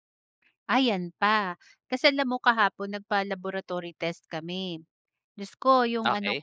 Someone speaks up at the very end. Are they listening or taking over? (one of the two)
listening